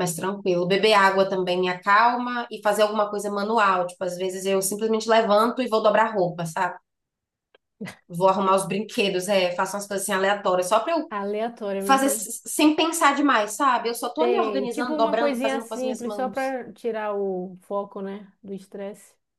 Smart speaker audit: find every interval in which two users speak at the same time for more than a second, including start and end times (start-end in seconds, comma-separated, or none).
14.2-16.5